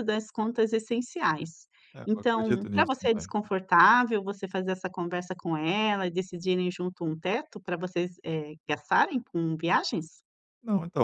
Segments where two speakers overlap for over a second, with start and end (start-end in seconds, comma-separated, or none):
2.1-3.3